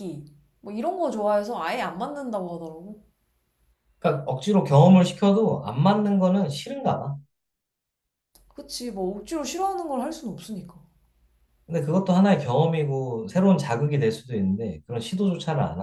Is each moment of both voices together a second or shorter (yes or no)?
yes